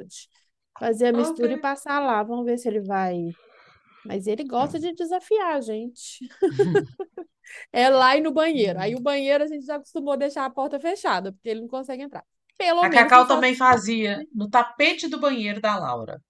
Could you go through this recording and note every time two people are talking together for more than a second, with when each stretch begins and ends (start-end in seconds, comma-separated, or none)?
12.8-14.2